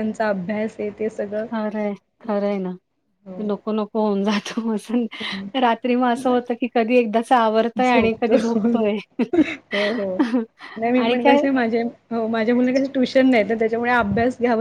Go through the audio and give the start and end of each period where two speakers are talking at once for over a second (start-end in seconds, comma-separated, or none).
7.8-9.0